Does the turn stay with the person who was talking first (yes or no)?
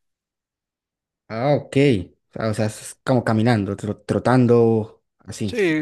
no